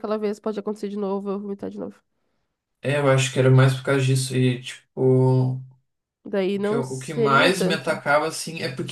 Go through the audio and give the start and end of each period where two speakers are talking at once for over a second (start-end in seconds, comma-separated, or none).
6.5-8.0